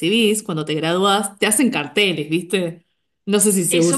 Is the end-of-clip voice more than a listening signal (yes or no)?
yes